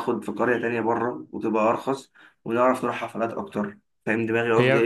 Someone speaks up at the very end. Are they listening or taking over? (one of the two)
taking over